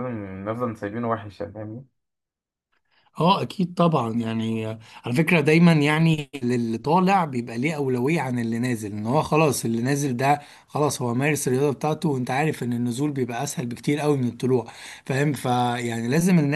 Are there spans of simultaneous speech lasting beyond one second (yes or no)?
no